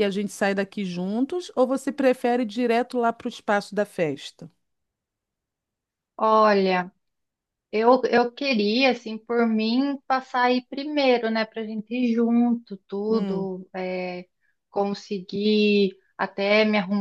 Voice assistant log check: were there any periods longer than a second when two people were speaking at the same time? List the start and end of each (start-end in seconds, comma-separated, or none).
none